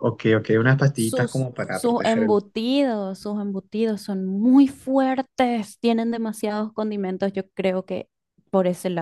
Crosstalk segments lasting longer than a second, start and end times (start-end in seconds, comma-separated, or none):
0.9-2.4